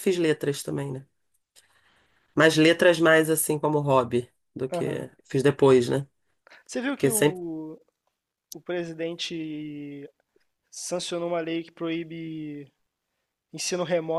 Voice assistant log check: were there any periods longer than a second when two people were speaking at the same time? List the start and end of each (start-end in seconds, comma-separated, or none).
none